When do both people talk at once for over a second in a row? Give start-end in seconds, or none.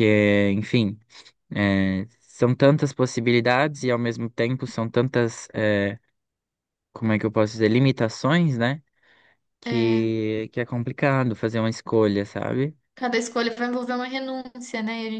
none